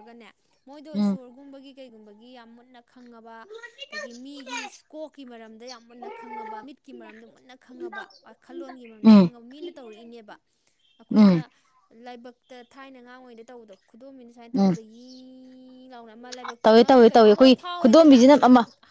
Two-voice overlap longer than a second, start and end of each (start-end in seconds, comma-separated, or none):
16.6-18.2